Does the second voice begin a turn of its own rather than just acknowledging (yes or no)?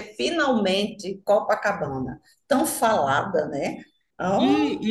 yes